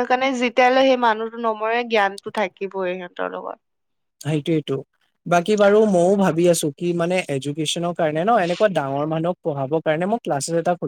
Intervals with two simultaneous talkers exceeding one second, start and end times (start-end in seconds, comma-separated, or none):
none